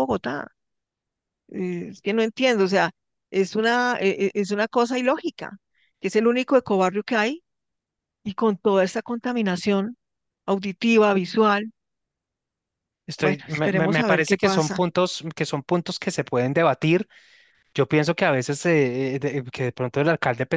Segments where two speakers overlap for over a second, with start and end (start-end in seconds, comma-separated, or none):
13.2-14.8